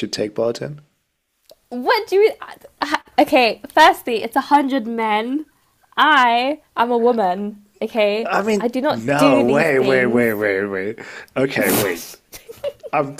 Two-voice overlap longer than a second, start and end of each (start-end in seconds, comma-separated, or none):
8.3-10.4